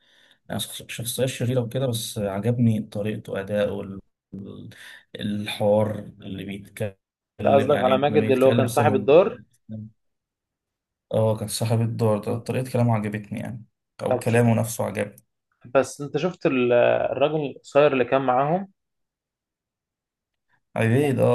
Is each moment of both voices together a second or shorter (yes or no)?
no